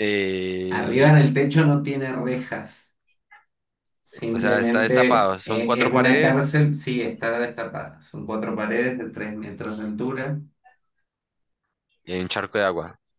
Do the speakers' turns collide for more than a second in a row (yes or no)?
yes